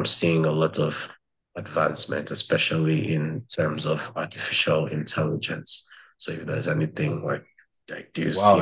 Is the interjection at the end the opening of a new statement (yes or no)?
yes